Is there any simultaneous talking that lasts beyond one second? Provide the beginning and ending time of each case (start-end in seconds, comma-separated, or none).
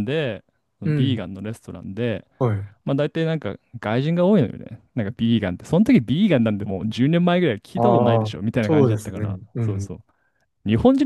7.8-9.9